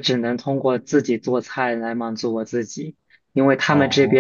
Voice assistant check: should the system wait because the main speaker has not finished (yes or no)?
yes